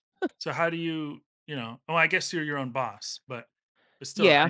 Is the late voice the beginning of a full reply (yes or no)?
no